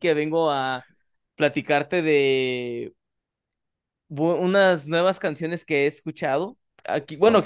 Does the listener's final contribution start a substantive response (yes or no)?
no